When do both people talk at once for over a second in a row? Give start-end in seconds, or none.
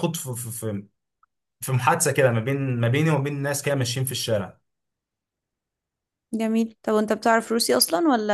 none